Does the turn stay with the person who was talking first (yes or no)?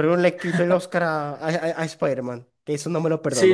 no